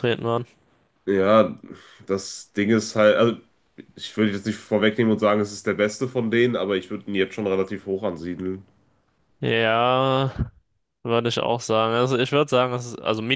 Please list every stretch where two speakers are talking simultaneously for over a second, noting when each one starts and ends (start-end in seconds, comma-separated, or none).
none